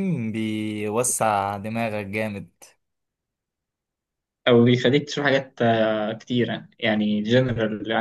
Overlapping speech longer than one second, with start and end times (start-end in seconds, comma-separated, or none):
none